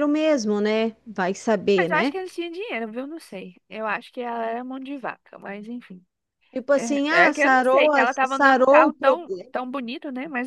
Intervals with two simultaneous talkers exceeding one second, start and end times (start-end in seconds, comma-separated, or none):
7.1-9.5